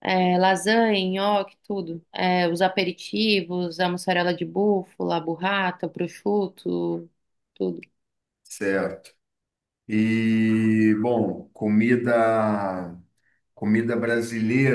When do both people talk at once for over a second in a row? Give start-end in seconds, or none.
none